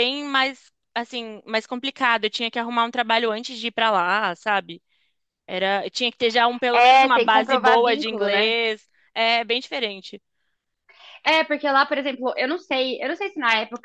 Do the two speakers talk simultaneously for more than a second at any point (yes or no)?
yes